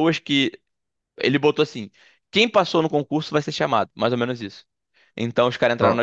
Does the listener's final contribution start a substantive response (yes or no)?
no